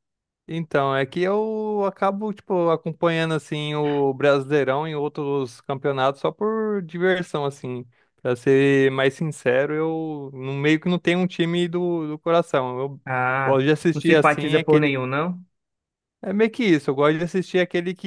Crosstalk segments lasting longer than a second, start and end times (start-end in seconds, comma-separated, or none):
13.4-15.0